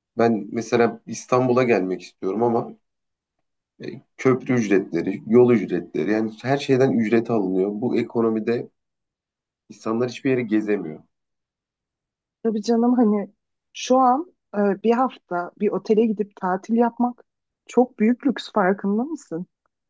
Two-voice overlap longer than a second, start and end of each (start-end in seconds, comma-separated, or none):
none